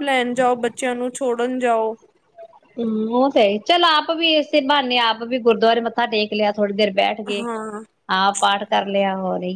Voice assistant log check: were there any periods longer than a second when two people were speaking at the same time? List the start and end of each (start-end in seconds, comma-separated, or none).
none